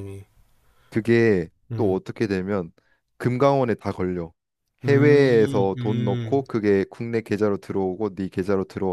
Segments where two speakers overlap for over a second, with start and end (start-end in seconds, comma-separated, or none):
4.8-6.4